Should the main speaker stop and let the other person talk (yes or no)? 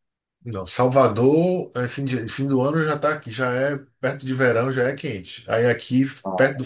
no